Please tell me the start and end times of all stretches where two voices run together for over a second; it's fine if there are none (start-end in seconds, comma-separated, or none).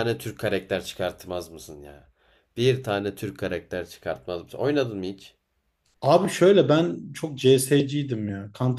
none